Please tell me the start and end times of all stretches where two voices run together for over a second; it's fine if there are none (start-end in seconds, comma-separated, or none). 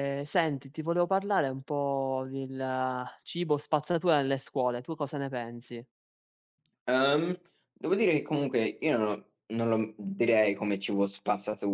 none